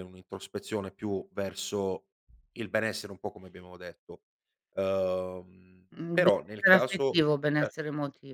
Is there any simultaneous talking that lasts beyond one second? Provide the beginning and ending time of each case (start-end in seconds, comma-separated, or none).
6.0-7.8